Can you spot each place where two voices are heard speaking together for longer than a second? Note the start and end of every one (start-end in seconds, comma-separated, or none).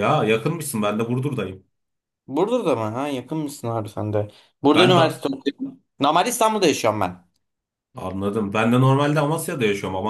none